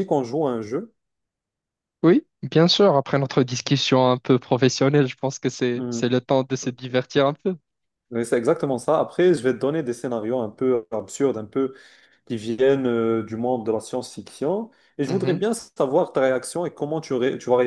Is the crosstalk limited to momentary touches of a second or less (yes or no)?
yes